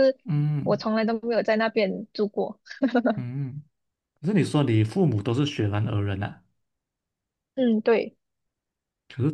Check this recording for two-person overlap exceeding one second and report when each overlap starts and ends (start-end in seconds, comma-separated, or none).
none